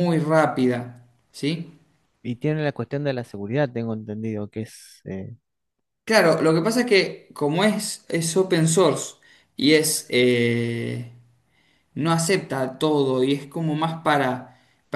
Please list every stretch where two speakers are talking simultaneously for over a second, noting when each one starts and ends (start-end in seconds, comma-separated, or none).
none